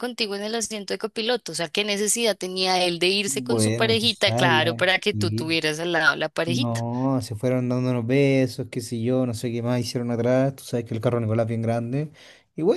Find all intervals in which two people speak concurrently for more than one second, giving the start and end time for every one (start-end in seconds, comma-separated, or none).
3.3-5.5